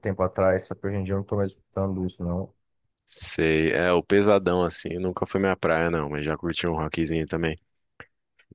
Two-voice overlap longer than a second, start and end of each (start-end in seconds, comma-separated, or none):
none